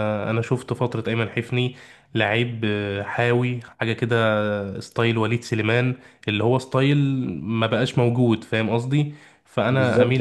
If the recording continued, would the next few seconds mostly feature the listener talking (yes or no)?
yes